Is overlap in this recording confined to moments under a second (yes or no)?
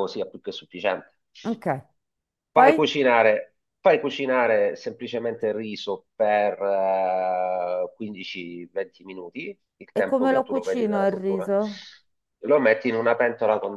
no